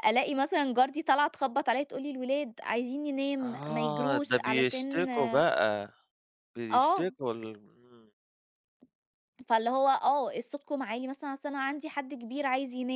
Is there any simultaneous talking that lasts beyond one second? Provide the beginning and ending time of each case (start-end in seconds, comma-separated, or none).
3.5-5.1